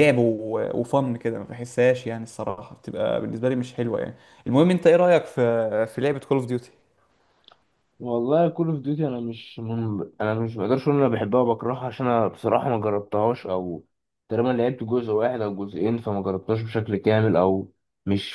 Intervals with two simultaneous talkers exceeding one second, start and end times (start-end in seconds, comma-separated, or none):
none